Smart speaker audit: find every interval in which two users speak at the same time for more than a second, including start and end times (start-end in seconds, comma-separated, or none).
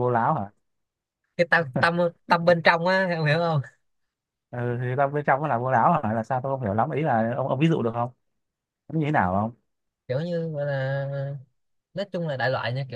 none